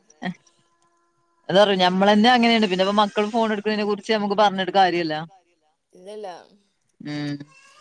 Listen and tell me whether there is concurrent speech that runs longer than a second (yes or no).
yes